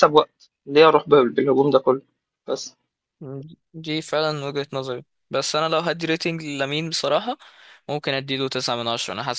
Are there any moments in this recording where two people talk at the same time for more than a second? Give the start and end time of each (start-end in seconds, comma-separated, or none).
none